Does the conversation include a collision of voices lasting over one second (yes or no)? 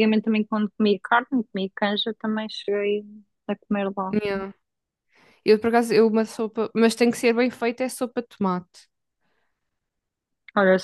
no